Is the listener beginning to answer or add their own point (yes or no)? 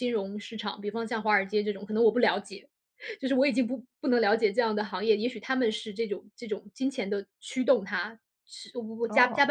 no